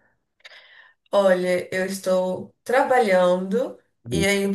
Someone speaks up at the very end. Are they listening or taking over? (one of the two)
listening